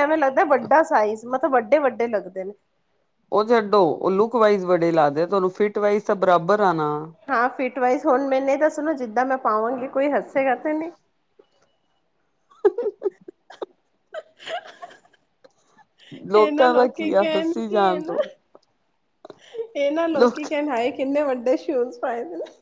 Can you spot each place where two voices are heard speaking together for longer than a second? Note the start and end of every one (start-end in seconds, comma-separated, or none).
16.4-18.1